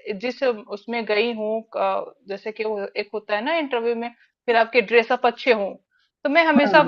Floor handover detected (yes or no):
no